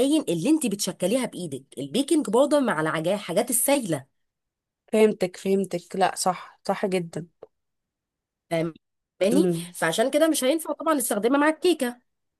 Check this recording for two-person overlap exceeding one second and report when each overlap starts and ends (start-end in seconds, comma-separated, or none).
none